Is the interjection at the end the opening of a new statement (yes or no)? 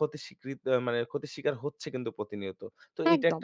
no